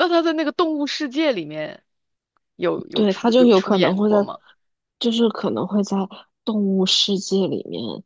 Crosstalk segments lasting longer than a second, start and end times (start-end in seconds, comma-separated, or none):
2.9-4.2